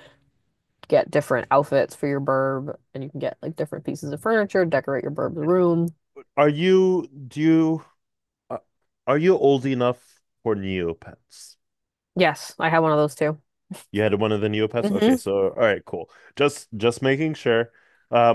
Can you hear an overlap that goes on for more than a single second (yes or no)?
no